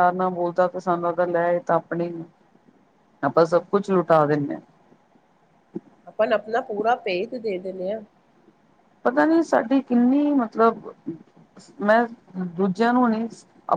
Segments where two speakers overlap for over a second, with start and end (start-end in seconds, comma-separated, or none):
none